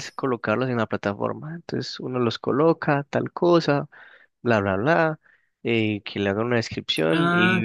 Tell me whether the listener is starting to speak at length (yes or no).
no